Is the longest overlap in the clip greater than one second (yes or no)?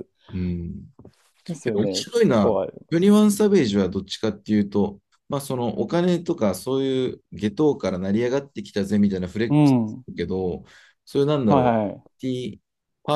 yes